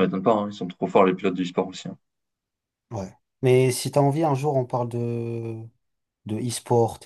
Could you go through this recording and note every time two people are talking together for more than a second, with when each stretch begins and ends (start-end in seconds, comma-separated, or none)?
none